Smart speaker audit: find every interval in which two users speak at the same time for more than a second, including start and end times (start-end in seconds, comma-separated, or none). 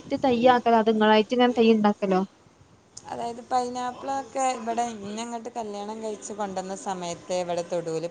none